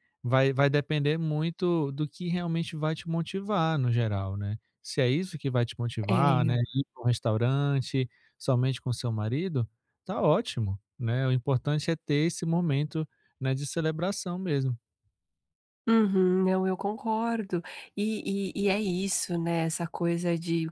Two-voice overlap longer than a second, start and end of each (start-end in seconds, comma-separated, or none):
none